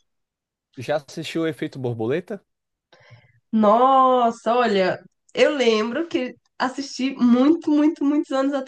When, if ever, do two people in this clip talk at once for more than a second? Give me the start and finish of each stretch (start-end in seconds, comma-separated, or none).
none